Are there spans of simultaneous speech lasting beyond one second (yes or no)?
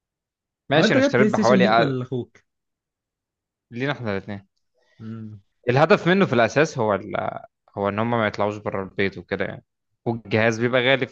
yes